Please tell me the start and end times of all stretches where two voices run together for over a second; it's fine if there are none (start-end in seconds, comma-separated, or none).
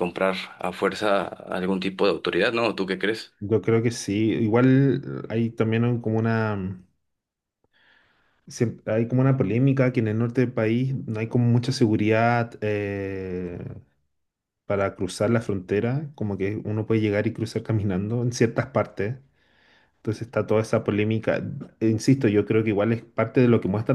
none